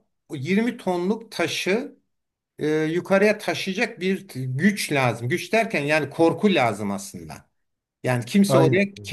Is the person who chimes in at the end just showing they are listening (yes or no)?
yes